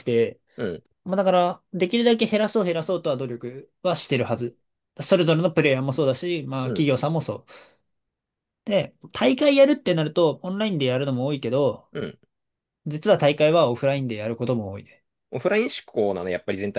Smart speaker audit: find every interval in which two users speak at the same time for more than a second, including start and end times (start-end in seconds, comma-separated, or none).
none